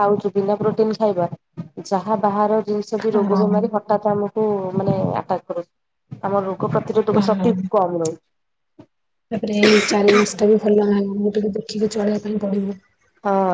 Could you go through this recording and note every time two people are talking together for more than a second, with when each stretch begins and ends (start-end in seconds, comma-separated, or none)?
none